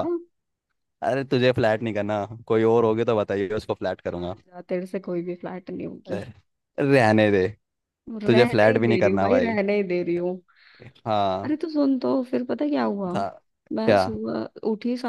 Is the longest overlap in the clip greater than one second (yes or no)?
yes